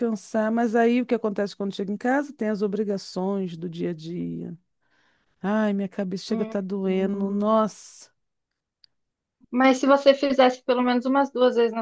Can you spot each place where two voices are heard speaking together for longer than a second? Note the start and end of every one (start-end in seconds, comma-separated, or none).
6.3-7.6